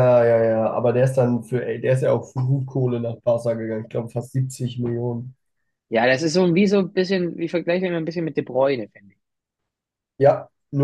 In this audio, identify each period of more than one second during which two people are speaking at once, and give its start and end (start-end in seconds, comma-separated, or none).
none